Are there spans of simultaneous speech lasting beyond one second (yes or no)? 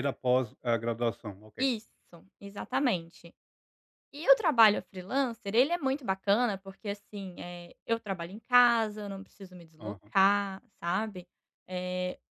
no